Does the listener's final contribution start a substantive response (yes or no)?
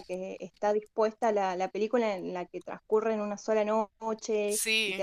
no